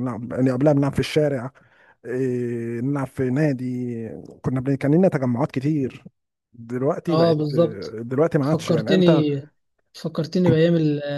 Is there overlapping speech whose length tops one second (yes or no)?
no